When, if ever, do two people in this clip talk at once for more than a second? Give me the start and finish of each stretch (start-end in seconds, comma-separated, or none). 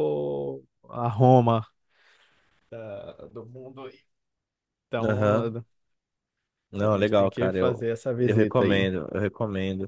6.8-8.9